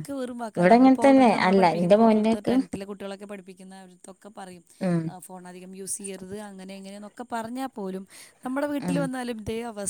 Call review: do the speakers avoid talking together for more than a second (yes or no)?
no